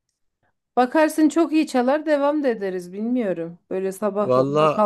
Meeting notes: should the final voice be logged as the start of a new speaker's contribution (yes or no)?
no